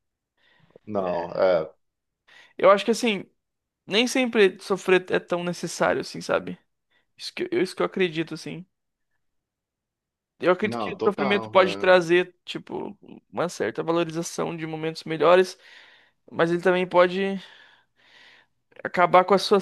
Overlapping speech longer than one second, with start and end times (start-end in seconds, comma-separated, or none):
10.6-11.9